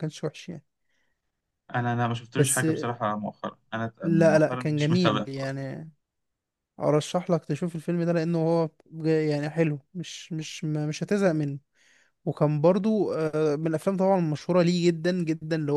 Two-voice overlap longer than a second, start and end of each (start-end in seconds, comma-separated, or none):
4.0-5.5